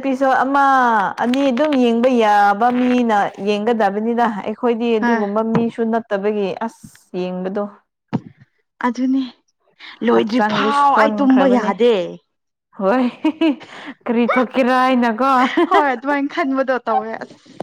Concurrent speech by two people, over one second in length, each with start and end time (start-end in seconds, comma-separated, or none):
10.1-11.7